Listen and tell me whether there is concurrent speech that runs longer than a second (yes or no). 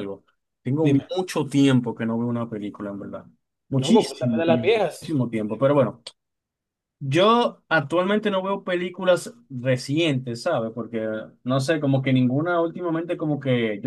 yes